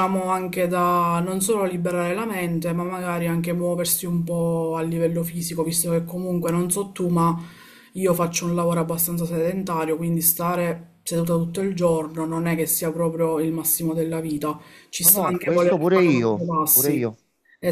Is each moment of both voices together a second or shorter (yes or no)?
no